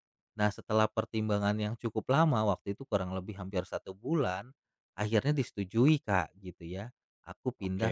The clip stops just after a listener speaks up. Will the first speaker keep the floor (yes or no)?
yes